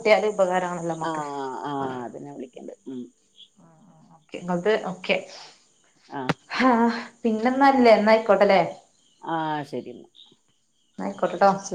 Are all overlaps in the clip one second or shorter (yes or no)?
yes